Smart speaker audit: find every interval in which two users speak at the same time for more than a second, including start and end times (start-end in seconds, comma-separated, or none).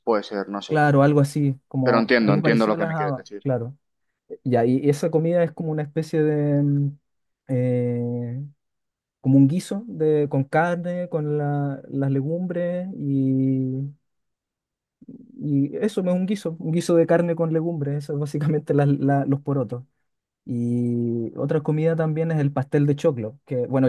1.8-3.5